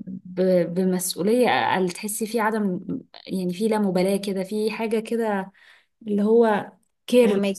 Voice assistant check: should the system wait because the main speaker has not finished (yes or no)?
no